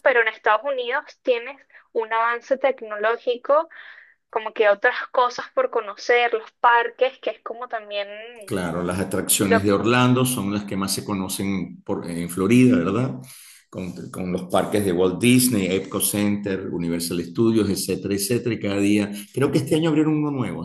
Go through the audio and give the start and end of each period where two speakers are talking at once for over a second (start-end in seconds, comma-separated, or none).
none